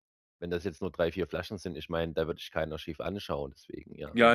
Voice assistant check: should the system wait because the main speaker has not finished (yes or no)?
no